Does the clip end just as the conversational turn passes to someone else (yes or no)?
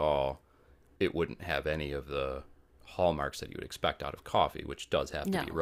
no